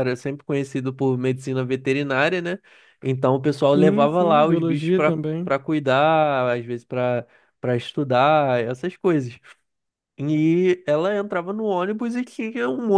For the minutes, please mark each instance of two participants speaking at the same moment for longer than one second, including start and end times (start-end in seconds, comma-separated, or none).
3.8-5.5